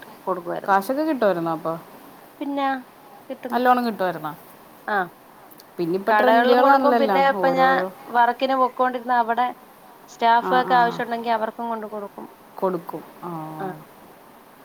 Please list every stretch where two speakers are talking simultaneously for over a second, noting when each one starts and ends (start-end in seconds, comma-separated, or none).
6.1-7.7